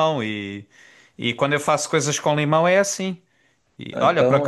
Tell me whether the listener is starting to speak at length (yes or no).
no